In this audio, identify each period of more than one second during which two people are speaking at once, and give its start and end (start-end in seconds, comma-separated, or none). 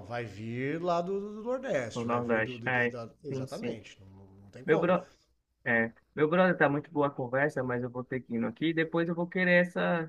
1.9-3.8